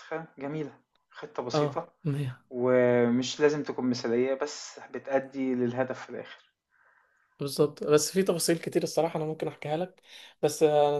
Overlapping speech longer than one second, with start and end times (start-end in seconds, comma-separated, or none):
none